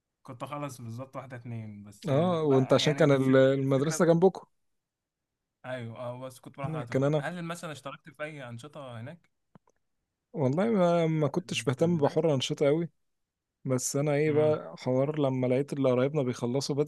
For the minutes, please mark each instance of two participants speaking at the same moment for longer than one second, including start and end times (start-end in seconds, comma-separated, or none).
2.1-4.0